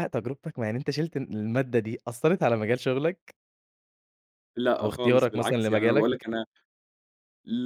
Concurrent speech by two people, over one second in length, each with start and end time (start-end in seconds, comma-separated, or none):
4.8-6.2